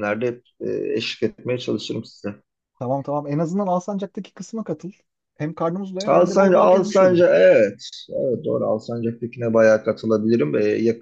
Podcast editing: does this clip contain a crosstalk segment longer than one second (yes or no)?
yes